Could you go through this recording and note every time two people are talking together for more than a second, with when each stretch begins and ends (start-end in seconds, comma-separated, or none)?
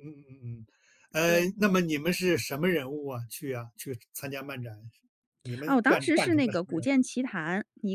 5.7-7.0